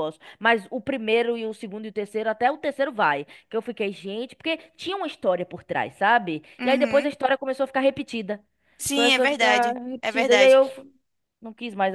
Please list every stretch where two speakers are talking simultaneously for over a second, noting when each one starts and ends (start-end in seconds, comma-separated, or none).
8.9-10.6